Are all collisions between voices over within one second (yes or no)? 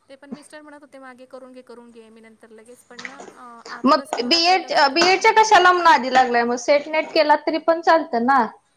no